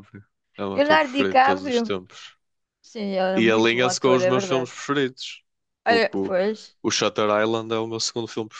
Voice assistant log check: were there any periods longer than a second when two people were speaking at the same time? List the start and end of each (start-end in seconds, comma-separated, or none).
0.7-1.9, 3.4-4.7